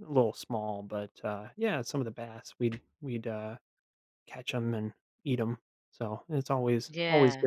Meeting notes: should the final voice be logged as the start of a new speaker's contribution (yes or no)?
no